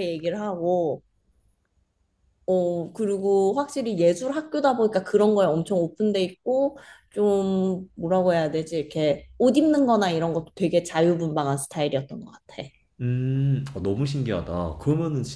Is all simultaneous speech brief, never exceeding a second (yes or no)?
yes